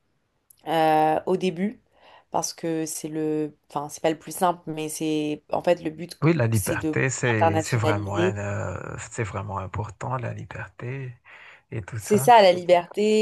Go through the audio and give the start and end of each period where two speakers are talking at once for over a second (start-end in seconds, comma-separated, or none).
6.5-8.4